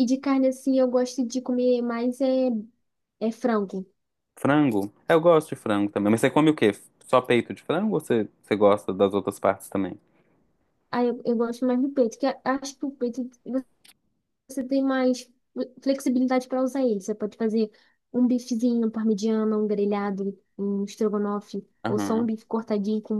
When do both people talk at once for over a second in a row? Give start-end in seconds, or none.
none